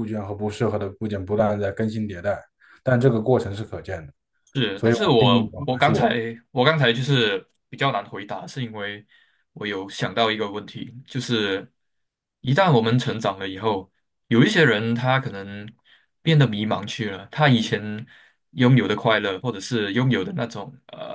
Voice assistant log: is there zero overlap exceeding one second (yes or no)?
no